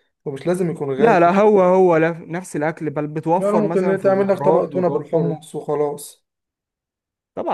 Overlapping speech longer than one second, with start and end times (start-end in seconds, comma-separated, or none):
3.4-5.4